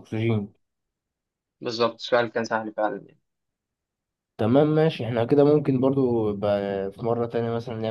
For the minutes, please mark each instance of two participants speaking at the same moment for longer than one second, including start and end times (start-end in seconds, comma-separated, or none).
none